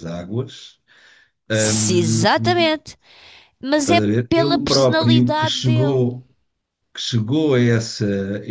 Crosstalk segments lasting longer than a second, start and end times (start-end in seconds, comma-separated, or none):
3.8-6.1